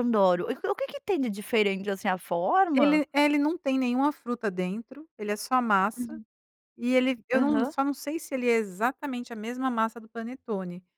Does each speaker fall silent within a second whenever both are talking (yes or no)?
yes